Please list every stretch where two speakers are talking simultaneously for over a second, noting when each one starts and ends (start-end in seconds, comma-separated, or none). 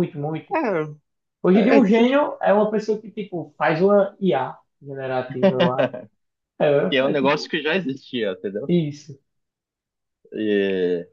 none